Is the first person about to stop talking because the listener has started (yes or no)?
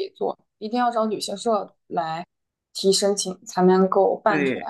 yes